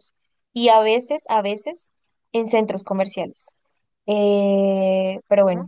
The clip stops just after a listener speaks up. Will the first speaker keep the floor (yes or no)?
yes